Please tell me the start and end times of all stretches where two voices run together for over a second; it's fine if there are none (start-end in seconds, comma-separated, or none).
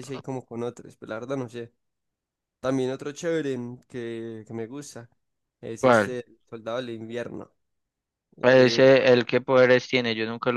none